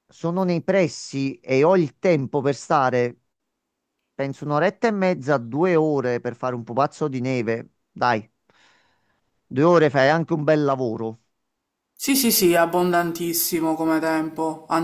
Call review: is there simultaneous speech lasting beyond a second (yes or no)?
no